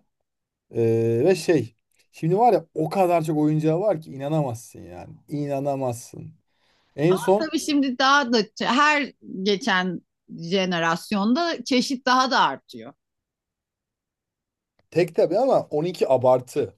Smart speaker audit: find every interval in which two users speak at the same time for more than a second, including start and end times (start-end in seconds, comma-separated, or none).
none